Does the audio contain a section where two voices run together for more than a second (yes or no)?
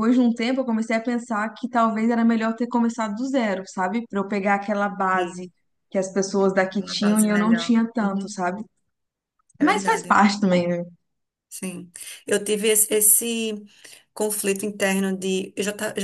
yes